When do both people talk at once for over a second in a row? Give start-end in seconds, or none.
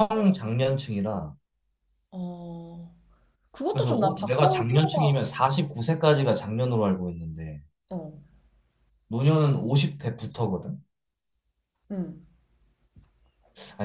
3.7-5.2